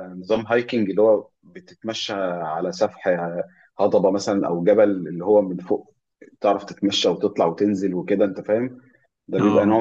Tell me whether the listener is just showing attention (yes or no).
yes